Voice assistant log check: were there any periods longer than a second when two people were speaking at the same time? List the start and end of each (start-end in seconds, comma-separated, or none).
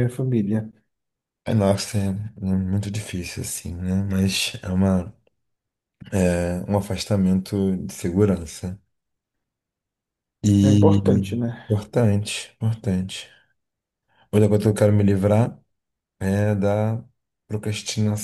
none